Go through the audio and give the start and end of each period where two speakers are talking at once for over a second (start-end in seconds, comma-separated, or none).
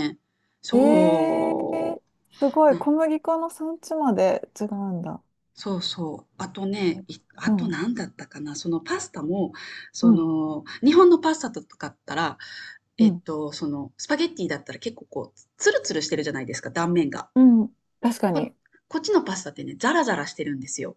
0.7-2.0